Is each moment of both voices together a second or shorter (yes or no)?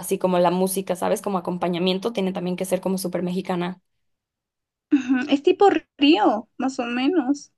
yes